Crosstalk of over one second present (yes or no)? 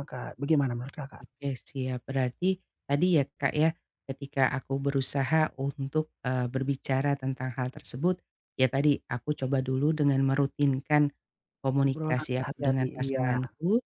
yes